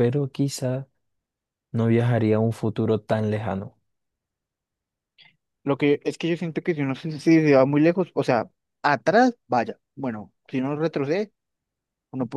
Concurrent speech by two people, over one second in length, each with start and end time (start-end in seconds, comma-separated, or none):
none